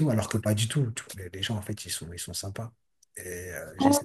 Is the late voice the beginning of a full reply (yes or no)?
no